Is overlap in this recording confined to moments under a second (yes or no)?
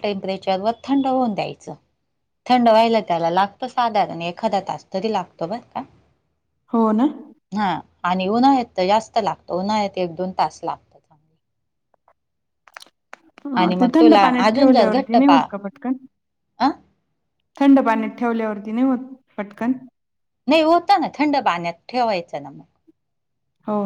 no